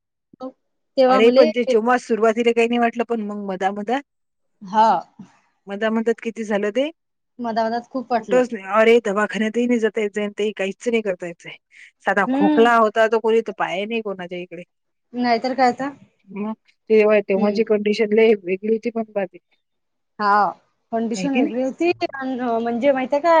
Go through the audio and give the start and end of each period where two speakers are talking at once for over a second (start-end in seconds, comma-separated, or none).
none